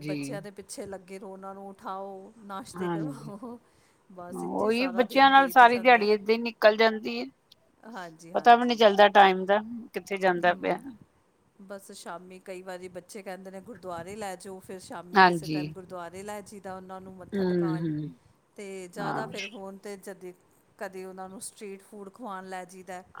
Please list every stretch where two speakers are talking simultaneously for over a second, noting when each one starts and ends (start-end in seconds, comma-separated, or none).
4.3-6.1